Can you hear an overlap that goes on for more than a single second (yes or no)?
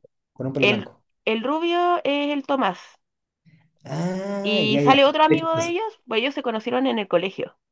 yes